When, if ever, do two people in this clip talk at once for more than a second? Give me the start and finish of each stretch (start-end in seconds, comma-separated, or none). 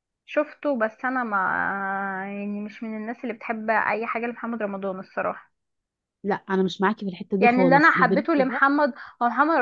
7.4-8.6